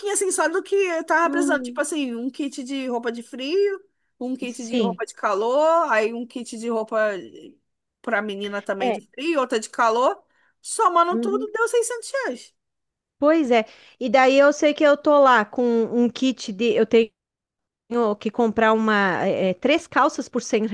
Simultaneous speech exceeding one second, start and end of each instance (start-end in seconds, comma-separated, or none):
none